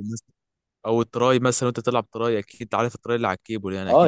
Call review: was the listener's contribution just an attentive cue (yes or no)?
no